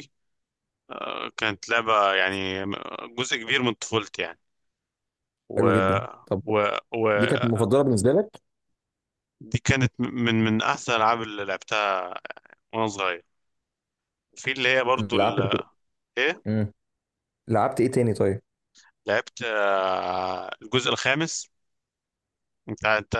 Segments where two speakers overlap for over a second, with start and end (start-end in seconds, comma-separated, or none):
none